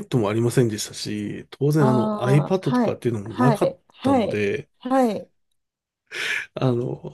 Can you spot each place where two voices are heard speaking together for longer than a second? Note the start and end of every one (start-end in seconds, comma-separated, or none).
1.8-4.4